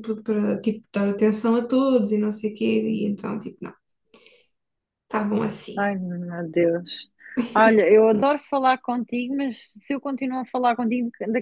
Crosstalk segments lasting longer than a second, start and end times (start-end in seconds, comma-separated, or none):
none